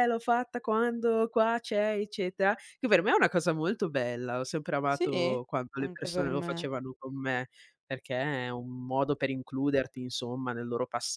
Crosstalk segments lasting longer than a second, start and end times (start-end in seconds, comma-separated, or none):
4.9-6.7